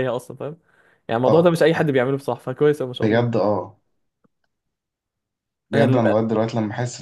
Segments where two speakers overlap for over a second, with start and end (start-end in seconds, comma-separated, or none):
none